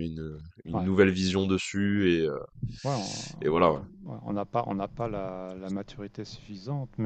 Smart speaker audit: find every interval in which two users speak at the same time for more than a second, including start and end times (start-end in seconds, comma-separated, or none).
none